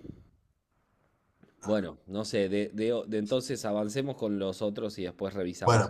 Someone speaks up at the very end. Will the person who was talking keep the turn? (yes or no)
no